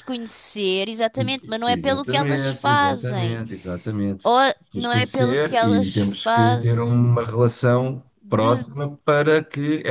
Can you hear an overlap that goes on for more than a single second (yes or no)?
yes